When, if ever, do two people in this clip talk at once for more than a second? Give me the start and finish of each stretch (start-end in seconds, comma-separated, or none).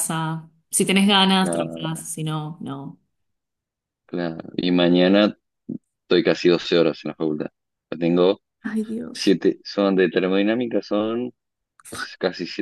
none